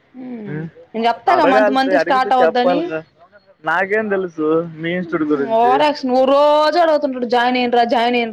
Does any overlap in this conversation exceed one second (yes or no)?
yes